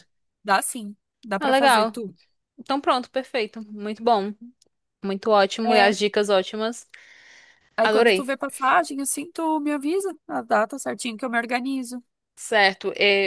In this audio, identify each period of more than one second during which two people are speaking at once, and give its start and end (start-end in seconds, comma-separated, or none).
none